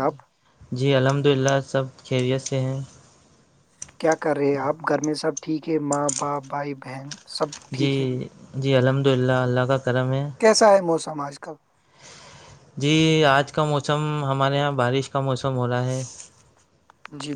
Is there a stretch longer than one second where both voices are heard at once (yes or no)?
no